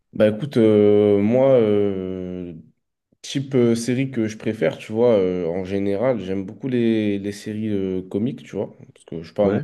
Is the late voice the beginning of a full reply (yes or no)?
no